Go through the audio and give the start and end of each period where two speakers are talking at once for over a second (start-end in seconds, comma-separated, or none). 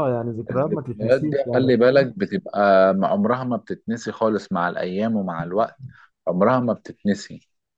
0.5-2.1